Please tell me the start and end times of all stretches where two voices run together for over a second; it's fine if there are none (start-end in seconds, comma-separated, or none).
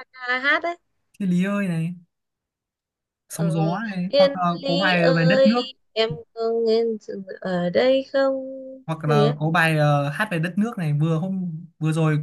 3.3-5.6